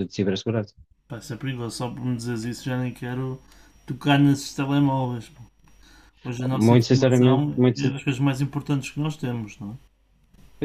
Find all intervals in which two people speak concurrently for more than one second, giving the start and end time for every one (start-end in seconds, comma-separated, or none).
6.5-7.9